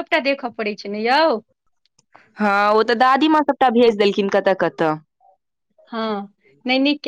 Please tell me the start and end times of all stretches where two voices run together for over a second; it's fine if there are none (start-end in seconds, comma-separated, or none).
none